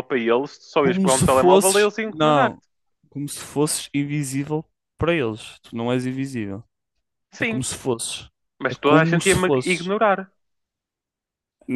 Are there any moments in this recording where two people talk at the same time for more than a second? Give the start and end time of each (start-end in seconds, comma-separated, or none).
0.8-2.6, 8.7-9.9